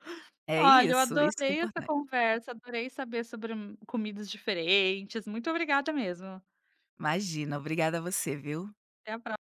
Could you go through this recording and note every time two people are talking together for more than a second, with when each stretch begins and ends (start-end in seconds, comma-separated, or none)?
0.6-1.9